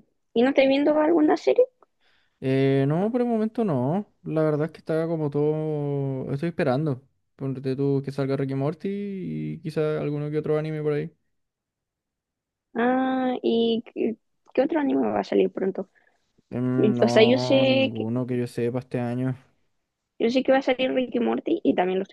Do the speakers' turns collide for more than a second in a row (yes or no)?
yes